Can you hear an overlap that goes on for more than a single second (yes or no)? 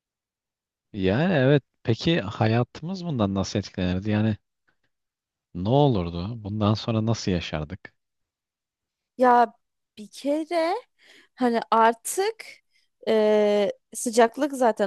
no